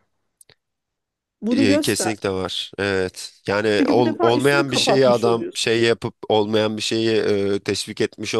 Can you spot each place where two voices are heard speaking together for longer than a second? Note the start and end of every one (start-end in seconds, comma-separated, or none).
3.7-5.8